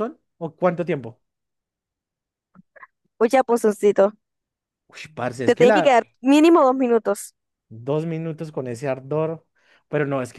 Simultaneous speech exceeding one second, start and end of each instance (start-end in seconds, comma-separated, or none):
none